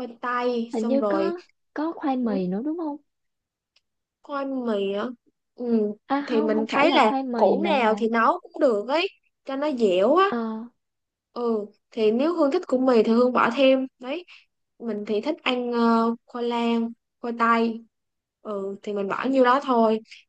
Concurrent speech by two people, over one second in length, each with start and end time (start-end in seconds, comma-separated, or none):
6.1-8.0